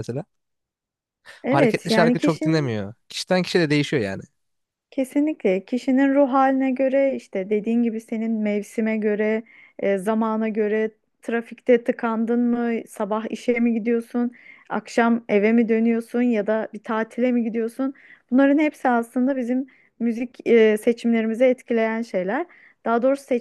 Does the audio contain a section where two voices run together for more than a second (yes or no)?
yes